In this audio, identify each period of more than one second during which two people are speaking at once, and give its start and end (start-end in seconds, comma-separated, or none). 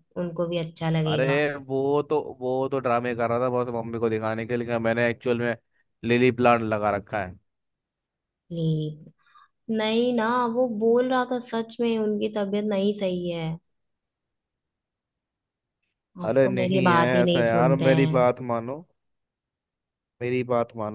16.2-18.1